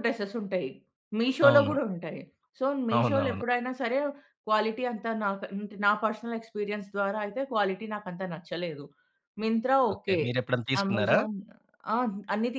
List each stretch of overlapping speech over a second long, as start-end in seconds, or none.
none